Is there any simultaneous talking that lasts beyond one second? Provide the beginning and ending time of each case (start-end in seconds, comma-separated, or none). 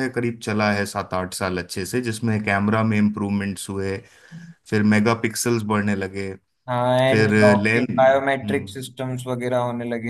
7.1-8.8